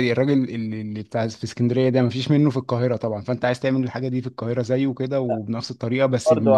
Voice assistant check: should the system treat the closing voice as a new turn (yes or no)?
yes